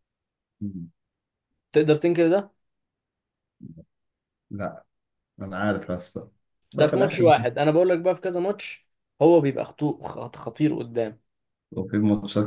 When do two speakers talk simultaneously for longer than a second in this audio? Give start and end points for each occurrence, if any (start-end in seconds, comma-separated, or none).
none